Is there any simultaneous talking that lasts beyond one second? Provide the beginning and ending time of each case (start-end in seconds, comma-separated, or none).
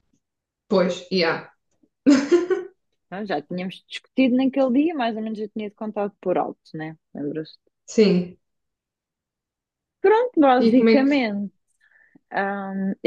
none